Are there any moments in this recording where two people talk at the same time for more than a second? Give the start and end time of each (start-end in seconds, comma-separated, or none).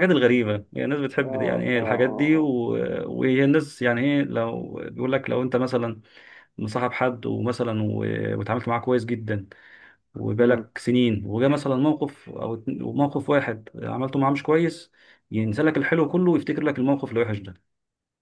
1.2-2.5